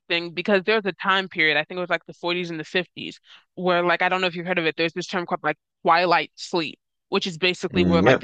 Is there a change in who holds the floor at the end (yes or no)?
no